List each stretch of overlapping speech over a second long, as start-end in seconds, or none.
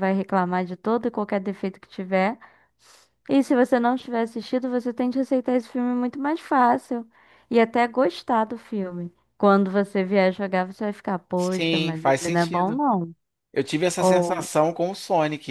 11.3-12.8